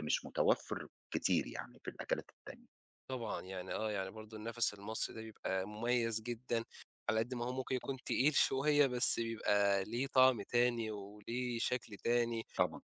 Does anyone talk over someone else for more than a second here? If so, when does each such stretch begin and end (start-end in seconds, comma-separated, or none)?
none